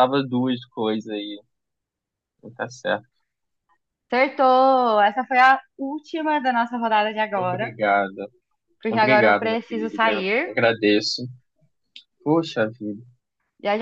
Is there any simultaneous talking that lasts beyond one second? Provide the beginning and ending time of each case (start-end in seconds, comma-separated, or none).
8.9-10.5